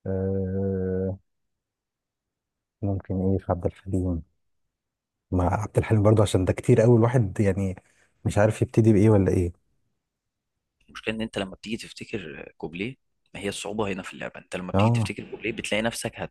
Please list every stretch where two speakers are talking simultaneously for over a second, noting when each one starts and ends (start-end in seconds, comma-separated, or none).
none